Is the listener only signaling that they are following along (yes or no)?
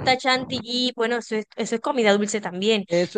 no